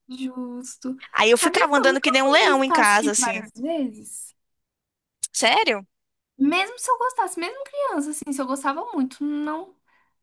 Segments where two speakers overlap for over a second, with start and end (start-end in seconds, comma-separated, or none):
1.3-3.5